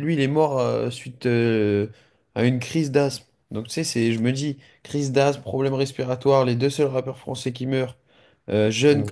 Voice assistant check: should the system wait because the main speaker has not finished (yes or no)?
yes